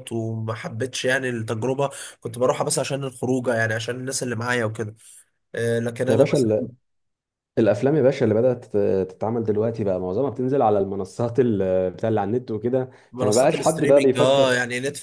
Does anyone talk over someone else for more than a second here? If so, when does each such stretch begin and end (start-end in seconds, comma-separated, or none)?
13.1-14.5